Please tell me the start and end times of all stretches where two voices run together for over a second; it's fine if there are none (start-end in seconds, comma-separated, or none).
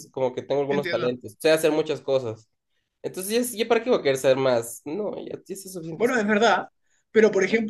none